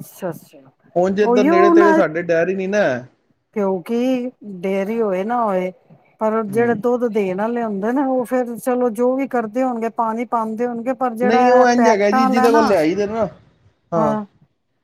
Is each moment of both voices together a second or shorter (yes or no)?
no